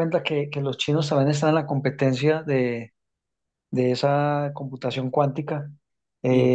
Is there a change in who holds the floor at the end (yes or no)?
no